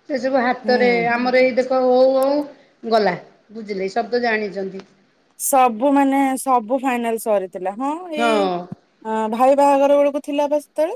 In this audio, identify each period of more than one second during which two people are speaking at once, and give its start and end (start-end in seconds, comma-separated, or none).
none